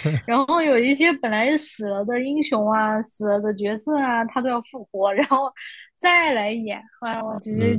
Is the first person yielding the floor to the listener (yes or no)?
yes